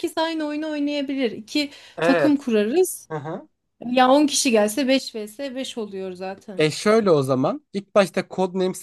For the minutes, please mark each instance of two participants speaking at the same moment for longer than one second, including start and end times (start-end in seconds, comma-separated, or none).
none